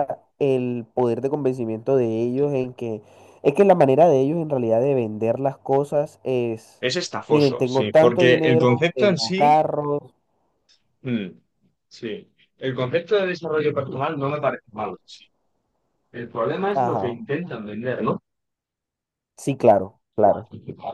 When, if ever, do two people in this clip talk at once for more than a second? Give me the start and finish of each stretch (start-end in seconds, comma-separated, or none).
7.3-9.6